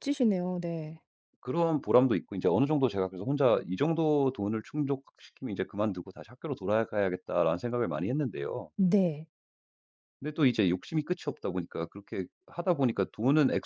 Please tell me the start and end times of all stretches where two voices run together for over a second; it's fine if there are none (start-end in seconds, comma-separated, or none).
none